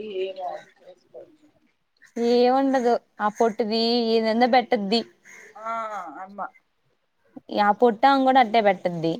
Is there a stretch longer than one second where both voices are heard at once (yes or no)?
no